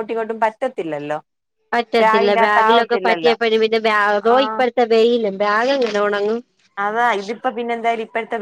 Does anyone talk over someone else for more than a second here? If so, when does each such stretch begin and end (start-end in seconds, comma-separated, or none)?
2.0-3.4